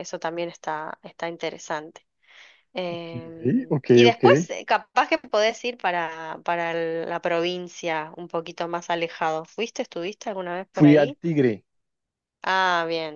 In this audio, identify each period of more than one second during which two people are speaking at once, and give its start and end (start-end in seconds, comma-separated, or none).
none